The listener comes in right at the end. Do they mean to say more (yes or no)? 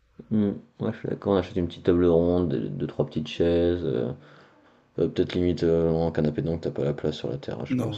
yes